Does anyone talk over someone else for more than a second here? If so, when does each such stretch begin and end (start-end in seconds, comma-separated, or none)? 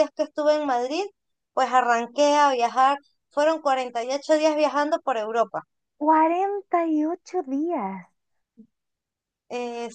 none